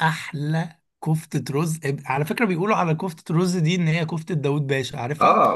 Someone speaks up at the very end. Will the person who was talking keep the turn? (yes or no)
no